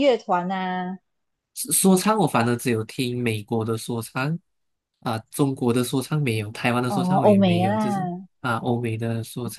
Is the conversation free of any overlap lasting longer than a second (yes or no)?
no